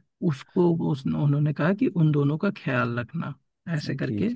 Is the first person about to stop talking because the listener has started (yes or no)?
no